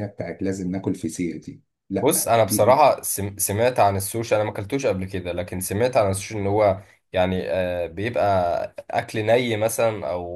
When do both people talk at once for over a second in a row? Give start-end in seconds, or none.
none